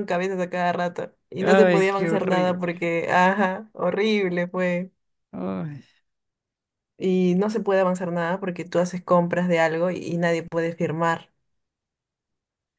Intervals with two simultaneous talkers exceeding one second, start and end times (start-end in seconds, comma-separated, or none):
1.4-2.6